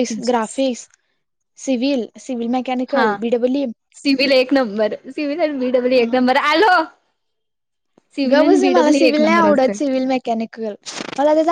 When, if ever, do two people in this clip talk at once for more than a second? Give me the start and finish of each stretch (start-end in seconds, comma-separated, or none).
8.3-9.8